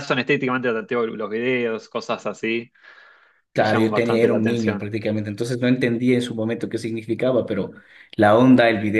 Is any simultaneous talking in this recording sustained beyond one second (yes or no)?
yes